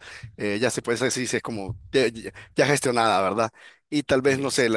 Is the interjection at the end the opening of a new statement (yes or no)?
no